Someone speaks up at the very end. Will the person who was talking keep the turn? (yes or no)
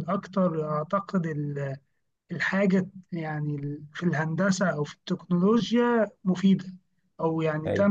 yes